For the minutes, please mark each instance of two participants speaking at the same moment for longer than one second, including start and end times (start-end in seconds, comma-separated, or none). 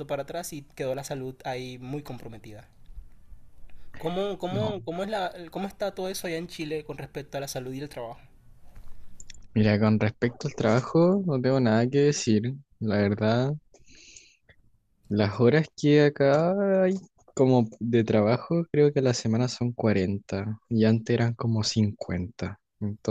none